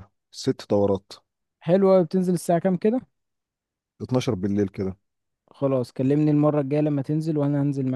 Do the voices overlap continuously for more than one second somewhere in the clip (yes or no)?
no